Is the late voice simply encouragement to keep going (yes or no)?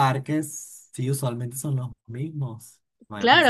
no